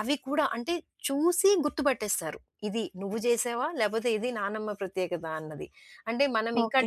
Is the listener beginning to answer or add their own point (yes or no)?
yes